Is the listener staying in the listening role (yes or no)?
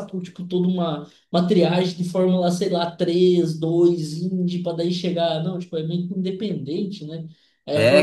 no